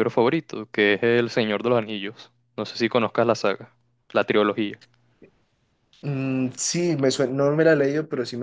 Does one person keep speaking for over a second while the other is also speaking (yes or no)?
no